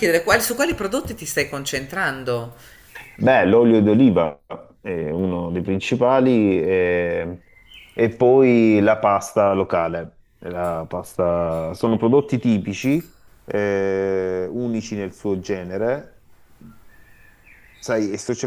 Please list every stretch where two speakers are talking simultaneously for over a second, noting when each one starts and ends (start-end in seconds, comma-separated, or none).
none